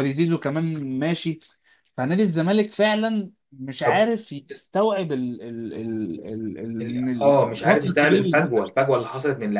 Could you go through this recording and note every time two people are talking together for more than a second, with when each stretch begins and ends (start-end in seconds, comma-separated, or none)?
6.8-8.4